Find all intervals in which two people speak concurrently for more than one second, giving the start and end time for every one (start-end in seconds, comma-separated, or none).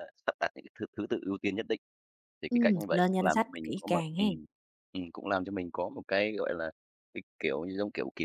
2.5-4.2